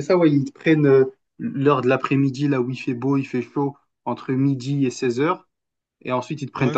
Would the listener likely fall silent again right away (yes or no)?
yes